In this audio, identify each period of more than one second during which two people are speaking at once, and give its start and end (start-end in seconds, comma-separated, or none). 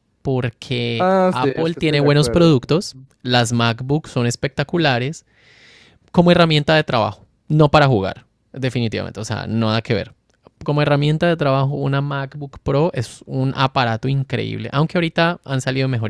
0.9-2.5